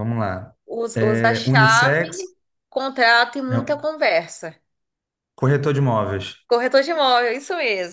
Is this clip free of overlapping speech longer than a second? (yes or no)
no